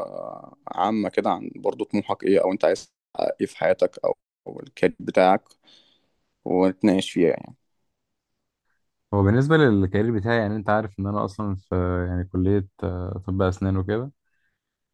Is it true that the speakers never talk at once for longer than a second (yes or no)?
yes